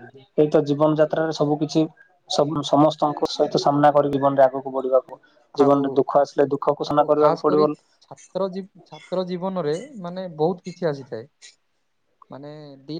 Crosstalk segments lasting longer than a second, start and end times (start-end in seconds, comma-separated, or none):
none